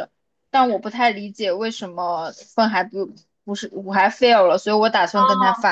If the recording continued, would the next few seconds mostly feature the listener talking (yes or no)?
yes